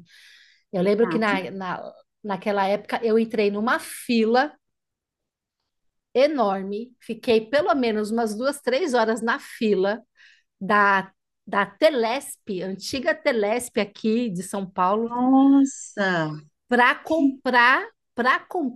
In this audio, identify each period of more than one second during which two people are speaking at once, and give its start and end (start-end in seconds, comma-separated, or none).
none